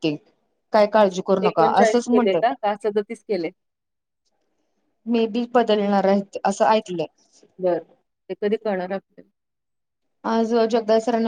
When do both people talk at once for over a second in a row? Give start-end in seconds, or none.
0.8-2.4